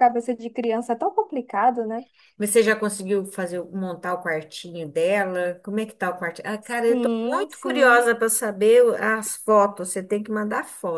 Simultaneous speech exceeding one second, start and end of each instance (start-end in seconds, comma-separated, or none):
6.7-8.1